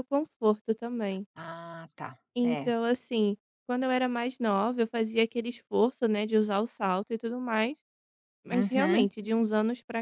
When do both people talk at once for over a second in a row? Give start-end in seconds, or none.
none